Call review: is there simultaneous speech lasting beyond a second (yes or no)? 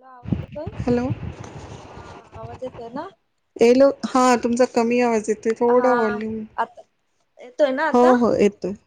no